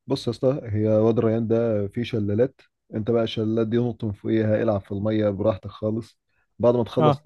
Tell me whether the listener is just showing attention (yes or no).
yes